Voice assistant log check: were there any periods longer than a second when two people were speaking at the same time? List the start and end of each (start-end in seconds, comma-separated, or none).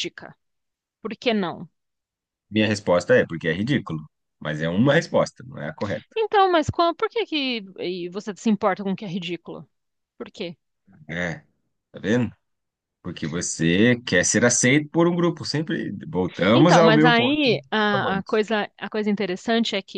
16.5-18.4